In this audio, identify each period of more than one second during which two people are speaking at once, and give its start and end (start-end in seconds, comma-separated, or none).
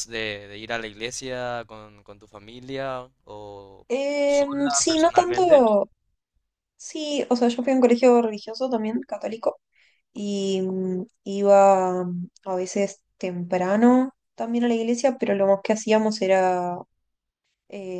4.2-5.6